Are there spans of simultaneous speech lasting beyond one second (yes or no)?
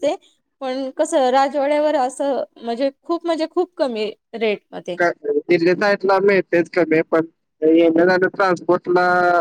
no